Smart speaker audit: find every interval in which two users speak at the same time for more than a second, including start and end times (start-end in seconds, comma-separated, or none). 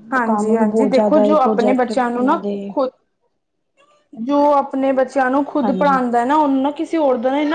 0.5-2.7